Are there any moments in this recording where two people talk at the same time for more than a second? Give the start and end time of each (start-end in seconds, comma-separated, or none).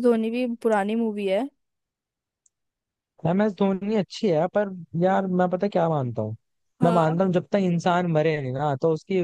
none